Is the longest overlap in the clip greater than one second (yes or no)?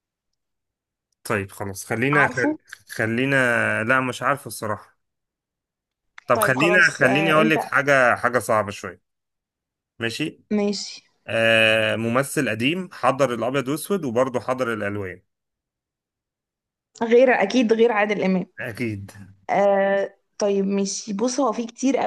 yes